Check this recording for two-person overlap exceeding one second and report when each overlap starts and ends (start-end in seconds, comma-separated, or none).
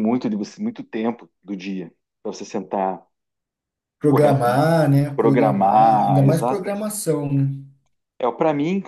5.2-6.8